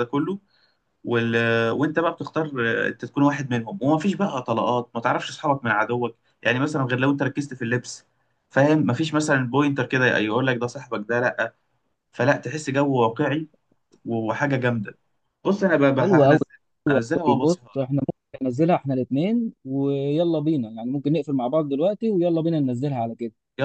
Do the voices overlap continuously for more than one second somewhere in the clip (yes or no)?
no